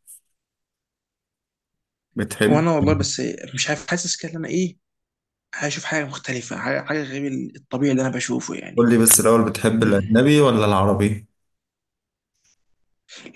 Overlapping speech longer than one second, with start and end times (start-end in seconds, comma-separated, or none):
none